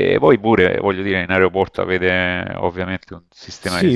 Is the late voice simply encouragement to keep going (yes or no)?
no